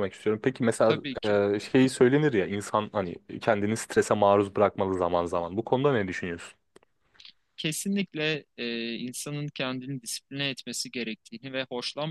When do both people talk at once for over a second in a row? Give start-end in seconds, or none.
none